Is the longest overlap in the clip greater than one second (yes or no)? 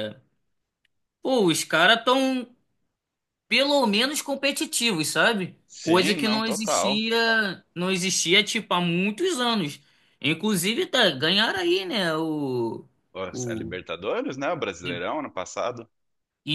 yes